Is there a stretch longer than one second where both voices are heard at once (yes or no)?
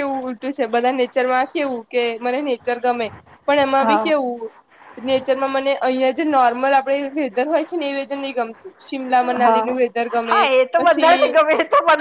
no